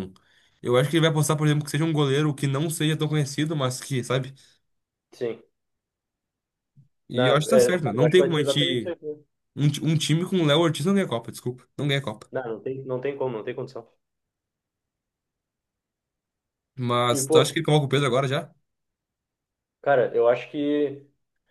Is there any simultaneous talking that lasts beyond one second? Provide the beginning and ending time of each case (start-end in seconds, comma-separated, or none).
7.1-8.9